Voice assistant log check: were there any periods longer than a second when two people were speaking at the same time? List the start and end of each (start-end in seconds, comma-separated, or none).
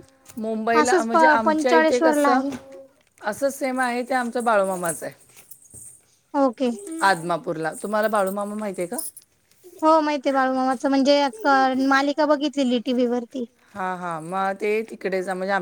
0.8-2.4